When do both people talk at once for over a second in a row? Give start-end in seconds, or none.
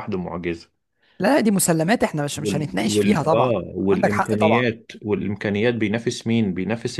2.4-4.7